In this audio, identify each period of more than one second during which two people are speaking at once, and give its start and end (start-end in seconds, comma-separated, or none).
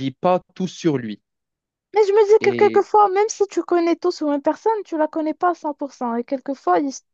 none